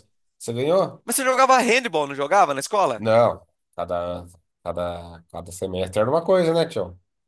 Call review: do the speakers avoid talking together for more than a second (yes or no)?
yes